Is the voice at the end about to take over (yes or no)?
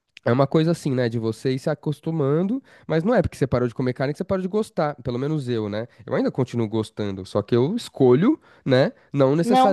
no